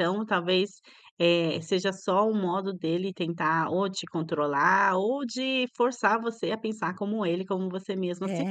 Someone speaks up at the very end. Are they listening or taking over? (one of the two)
taking over